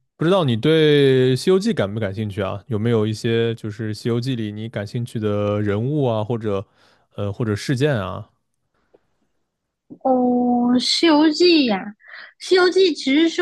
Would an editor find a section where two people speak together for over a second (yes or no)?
no